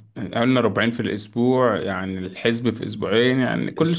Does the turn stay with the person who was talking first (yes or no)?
no